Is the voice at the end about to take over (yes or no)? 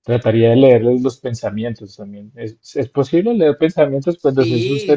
yes